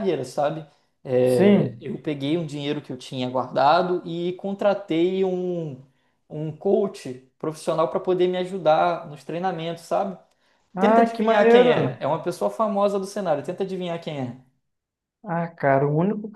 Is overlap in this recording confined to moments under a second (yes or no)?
no